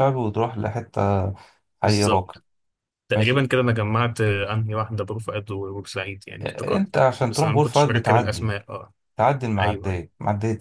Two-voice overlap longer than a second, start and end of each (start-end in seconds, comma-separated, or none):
6.4-8.5